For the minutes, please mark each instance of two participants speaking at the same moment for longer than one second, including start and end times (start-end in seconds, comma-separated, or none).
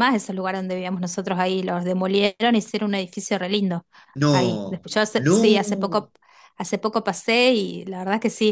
4.3-6.0